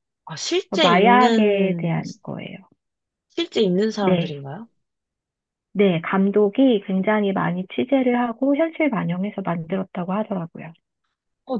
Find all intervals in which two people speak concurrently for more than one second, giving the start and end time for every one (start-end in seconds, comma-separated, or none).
0.7-2.0